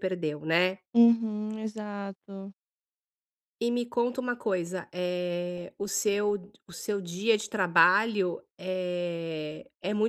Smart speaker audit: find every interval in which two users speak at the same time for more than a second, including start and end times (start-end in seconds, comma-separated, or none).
none